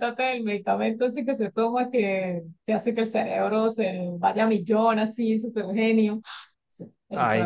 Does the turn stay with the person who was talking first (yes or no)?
no